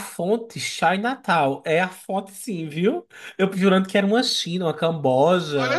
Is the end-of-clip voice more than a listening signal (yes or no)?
yes